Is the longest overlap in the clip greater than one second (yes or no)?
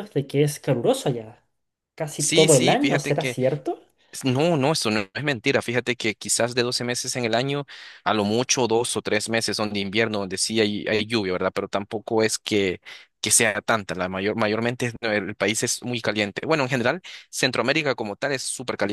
yes